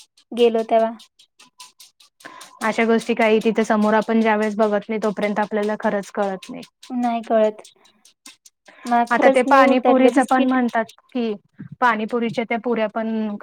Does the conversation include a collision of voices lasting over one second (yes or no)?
yes